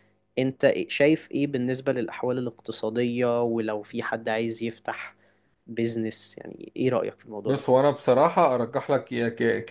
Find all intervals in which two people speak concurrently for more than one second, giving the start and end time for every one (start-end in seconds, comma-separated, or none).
none